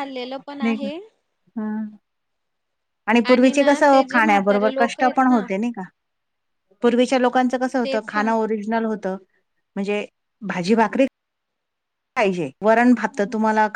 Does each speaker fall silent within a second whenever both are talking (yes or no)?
no